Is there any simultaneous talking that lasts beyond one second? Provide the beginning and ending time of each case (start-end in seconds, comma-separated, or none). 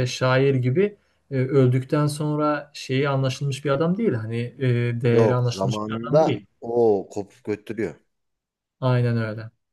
5.1-6.5